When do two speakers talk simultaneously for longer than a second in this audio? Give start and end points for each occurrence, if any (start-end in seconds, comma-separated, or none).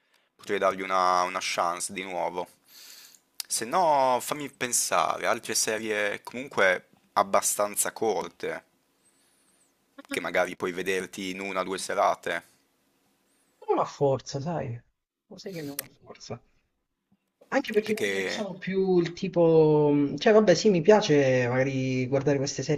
none